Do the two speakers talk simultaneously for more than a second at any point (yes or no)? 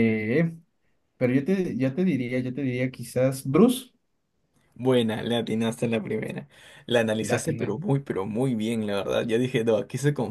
no